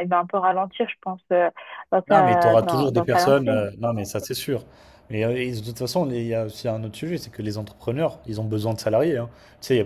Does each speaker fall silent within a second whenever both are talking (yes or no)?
no